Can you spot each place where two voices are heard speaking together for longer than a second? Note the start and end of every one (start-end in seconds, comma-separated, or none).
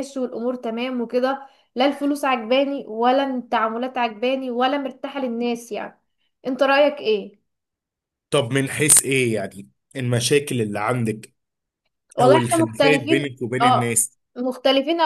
12.2-14.2